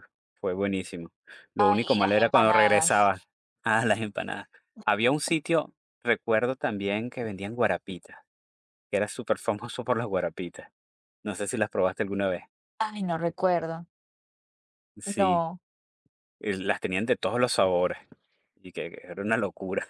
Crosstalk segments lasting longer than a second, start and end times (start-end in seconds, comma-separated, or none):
1.6-3.1